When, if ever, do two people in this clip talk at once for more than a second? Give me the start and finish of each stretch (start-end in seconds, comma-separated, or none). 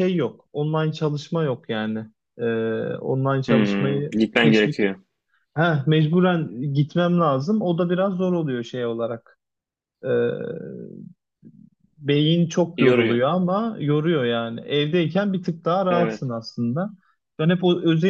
3.5-4.8